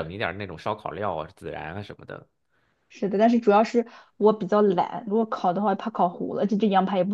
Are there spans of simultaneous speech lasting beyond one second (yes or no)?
no